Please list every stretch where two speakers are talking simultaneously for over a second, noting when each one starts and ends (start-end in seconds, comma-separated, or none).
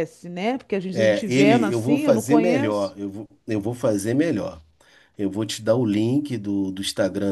0.9-3.0